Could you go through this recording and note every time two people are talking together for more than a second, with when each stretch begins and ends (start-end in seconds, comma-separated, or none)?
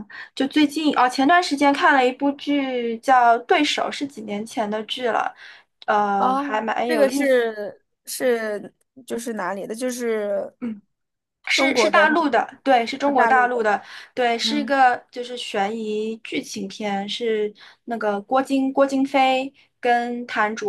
6.2-7.6